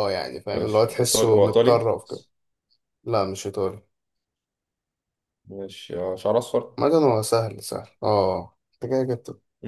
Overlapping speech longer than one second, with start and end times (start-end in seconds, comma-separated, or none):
0.5-1.9